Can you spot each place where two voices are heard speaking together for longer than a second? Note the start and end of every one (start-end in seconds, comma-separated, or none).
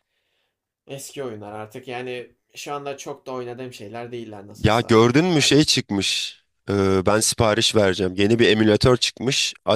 none